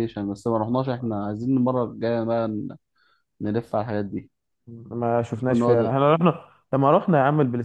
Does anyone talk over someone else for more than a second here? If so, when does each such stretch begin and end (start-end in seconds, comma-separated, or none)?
none